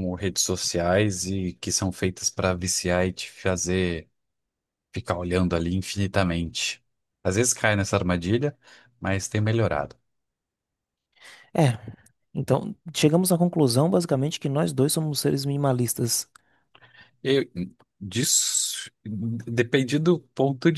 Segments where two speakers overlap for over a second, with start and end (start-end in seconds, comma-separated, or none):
none